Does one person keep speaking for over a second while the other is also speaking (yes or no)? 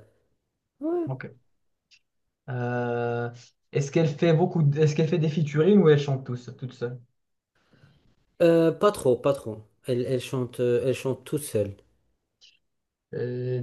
no